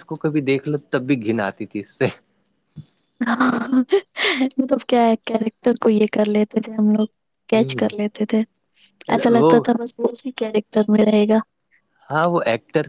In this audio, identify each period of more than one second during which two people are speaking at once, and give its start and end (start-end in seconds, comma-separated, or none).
none